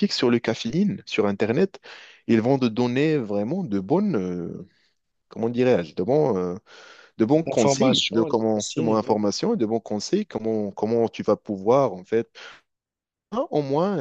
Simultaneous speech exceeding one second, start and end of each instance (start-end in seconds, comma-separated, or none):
7.5-9.0